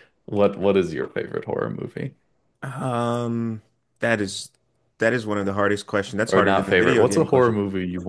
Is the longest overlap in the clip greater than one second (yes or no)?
yes